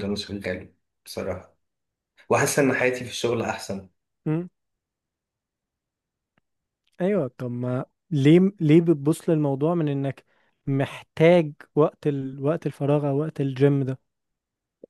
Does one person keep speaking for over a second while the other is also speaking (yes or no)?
no